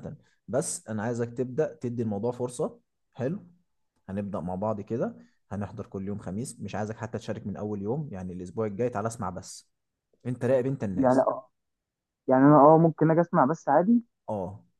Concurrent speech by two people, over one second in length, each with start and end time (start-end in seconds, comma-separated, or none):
none